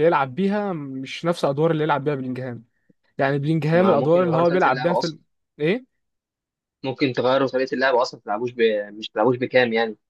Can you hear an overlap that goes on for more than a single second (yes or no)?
yes